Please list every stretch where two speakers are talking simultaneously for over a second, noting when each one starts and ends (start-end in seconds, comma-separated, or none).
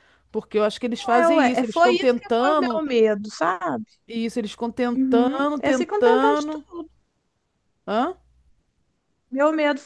1.1-2.8, 4.9-6.5